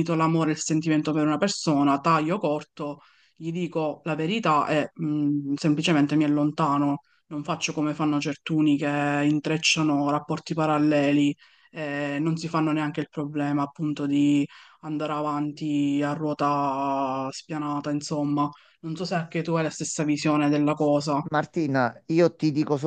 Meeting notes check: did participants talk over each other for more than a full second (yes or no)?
no